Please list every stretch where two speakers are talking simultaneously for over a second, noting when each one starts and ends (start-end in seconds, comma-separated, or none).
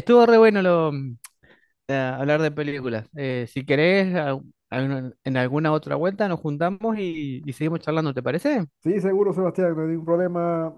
none